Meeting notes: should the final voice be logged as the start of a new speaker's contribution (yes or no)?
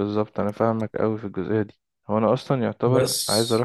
no